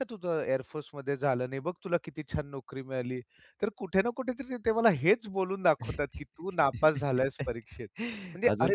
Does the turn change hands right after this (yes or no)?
no